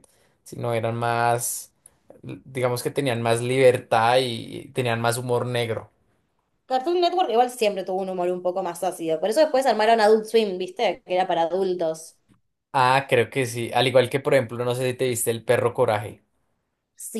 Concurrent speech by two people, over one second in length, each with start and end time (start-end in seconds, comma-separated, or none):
none